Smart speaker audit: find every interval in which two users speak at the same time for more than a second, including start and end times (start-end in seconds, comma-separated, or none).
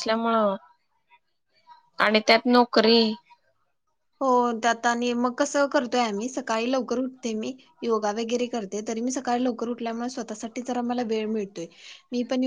none